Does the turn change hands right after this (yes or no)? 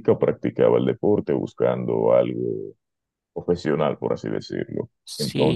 yes